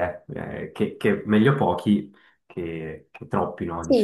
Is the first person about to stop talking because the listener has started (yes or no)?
yes